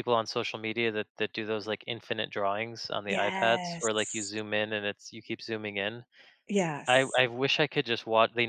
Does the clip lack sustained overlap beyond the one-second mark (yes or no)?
no